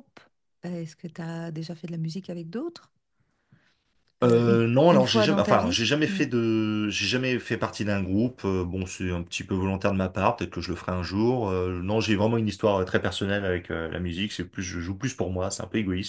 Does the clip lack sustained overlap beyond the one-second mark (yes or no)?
no